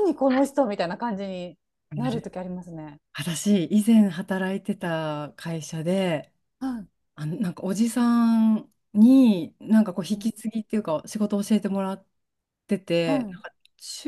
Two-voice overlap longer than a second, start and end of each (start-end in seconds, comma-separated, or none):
none